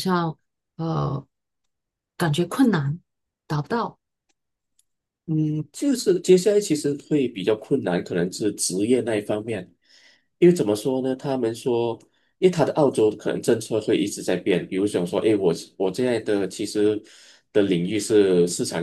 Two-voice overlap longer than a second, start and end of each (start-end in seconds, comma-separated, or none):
none